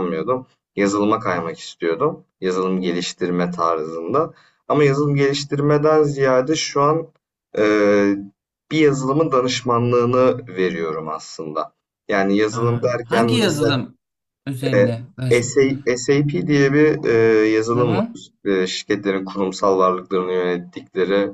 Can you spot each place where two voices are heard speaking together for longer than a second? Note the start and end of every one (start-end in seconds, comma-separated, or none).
12.5-13.8